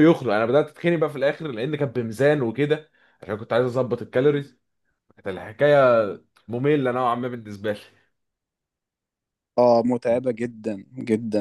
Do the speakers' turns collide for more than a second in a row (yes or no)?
no